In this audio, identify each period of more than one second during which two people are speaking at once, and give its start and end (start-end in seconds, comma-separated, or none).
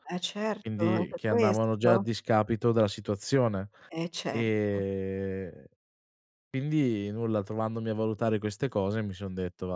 0.6-2.0